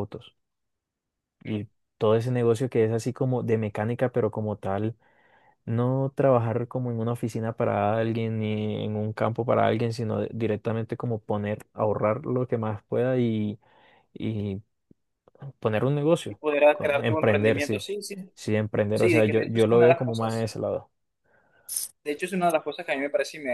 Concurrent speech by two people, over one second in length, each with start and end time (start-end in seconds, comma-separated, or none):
16.3-17.8, 18.9-20.5